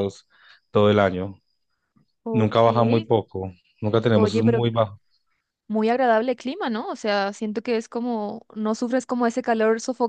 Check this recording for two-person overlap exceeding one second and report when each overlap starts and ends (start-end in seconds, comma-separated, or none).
none